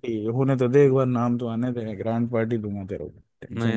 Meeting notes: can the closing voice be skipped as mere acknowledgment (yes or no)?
no